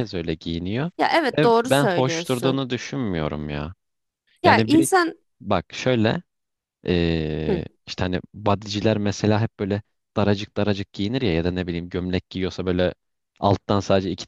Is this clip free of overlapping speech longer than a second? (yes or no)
no